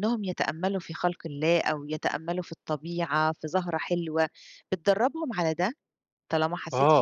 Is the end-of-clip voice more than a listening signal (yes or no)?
yes